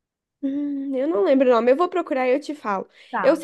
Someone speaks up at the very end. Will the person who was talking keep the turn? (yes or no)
yes